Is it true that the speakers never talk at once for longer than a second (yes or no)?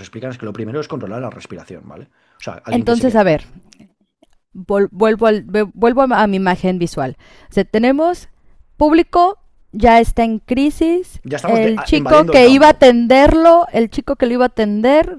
no